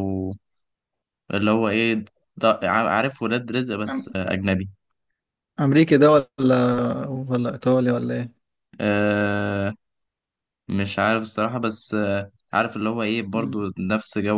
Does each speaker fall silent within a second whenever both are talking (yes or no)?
yes